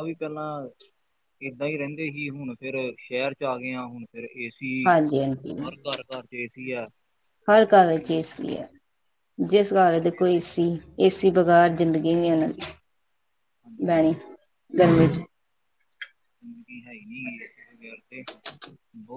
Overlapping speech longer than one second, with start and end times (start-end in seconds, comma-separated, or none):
none